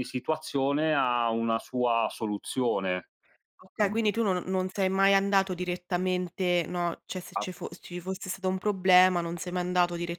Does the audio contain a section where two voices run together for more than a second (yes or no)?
no